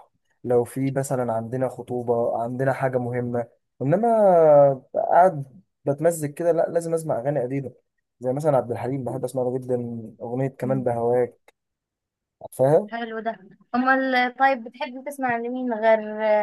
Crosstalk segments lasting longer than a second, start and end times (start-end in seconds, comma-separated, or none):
none